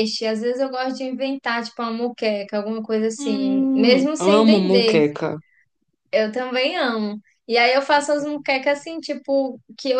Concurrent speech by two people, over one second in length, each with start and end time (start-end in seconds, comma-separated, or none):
3.2-5.1